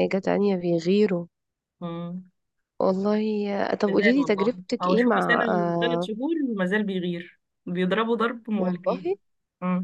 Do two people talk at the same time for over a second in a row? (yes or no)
yes